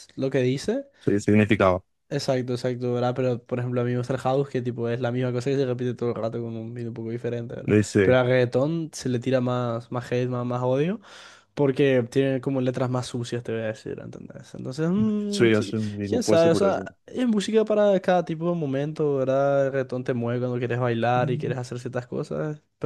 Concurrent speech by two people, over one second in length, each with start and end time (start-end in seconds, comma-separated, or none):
15.3-16.8